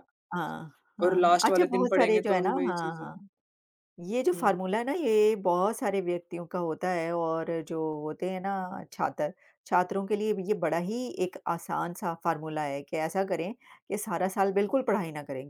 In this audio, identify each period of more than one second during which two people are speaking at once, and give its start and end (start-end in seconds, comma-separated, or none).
1.0-3.1